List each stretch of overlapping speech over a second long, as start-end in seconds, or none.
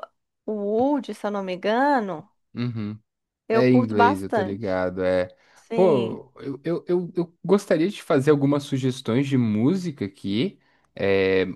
3.5-4.8